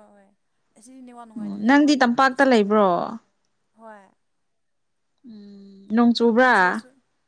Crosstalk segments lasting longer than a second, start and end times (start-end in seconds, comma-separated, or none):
1.4-2.9